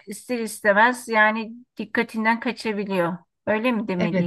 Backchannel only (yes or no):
no